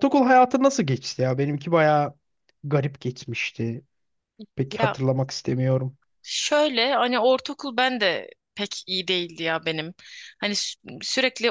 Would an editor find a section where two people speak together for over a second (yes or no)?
no